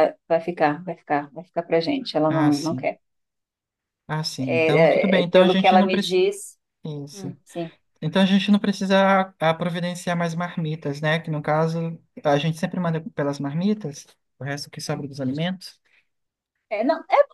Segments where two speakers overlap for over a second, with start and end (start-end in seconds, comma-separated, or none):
4.4-6.2